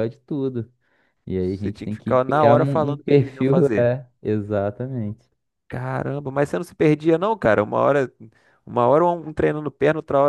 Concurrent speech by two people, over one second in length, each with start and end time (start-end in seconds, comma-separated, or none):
1.4-3.9